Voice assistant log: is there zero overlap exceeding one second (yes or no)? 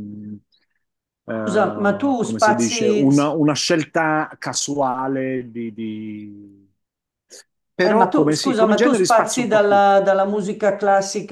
no